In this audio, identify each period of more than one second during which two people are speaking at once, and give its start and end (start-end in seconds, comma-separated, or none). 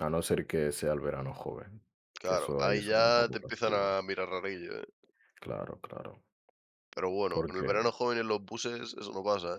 2.2-4.0